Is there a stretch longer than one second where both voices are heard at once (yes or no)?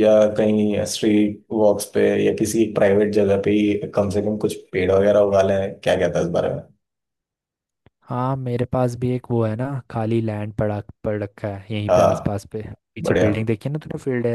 no